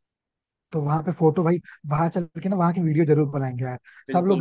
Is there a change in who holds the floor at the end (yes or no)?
no